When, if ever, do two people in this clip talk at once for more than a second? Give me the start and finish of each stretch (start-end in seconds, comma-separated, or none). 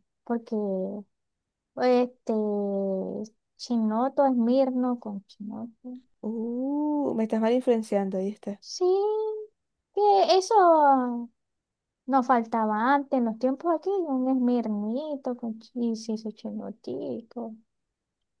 none